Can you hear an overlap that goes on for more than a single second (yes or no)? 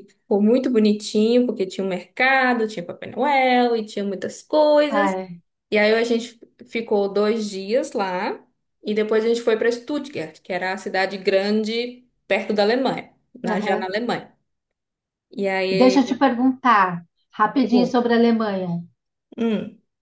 no